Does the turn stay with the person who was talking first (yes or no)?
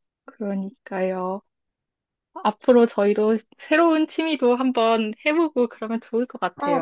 no